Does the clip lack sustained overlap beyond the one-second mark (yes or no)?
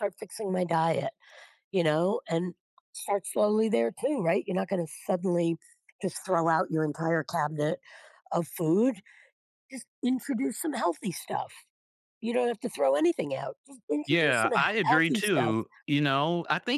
no